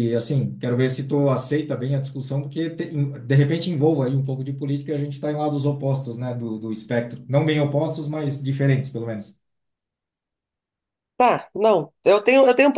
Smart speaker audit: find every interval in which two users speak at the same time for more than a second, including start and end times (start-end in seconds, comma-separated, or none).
none